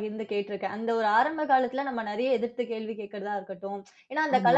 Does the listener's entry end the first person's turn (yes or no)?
no